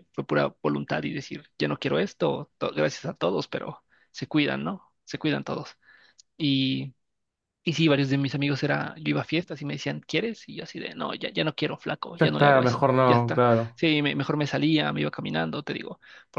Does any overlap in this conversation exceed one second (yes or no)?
yes